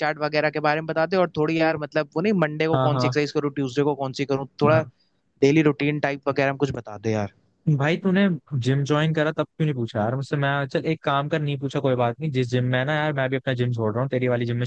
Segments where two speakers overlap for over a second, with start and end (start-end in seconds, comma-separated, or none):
none